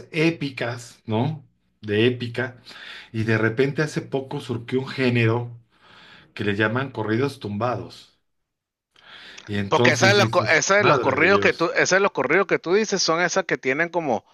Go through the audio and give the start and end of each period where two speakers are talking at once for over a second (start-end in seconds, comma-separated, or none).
9.7-11.7